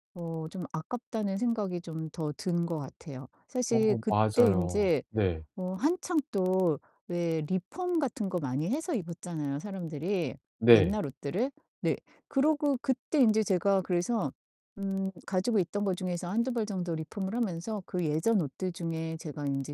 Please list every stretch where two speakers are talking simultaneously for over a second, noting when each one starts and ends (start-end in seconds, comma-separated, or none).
3.7-5.0